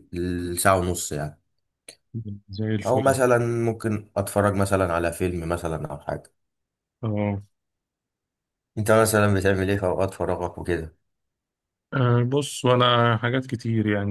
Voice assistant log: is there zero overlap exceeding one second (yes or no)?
yes